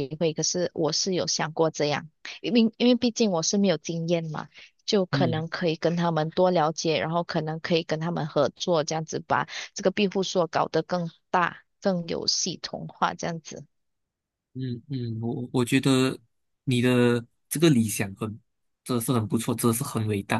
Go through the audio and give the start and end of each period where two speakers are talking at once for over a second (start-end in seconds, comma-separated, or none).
none